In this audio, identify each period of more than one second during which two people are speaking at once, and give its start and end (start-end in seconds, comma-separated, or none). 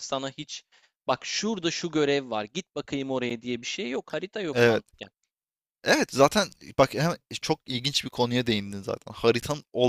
none